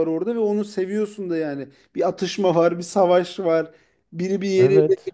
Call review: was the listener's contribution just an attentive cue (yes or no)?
yes